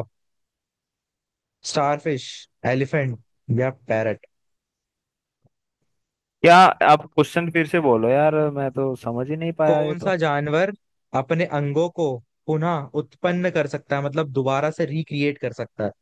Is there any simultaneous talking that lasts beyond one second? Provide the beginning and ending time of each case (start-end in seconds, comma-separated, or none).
none